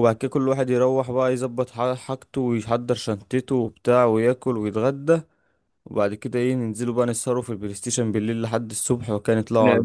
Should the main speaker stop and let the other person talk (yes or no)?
yes